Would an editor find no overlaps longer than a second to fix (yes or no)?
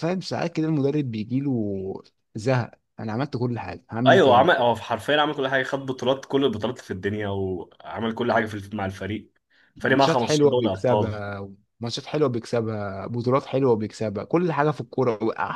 no